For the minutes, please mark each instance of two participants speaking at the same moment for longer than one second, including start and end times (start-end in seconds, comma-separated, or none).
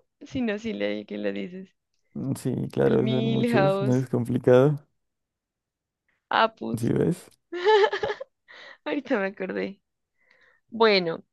2.8-4.0